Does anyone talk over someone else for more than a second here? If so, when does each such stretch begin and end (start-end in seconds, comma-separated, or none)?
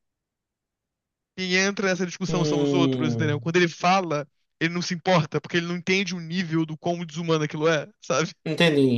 2.3-3.5